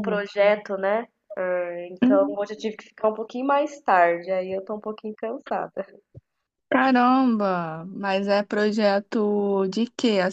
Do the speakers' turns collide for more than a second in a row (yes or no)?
no